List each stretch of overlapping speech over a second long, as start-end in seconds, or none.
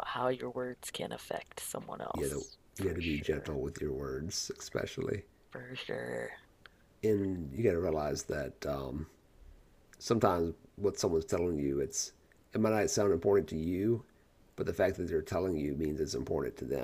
2.1-3.5